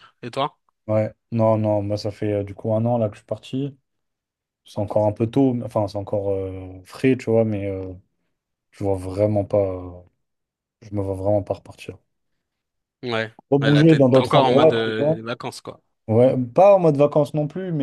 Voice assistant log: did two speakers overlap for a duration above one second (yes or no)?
yes